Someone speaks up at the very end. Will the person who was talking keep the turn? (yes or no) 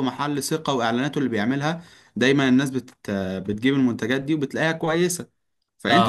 yes